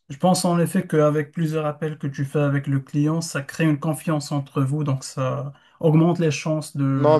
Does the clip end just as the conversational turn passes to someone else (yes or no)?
yes